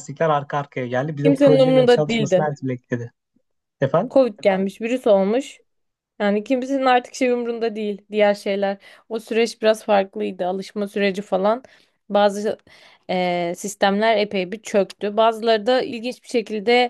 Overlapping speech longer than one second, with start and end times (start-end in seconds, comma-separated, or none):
1.2-2.5